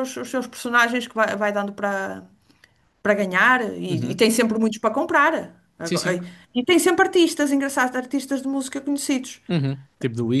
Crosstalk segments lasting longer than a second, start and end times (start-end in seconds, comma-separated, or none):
none